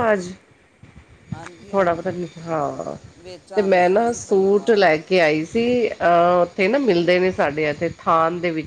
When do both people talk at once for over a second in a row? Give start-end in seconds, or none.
3.5-4.9